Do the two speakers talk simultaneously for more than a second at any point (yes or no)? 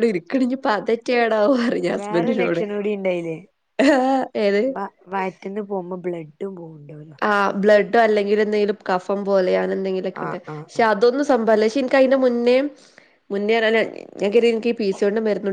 no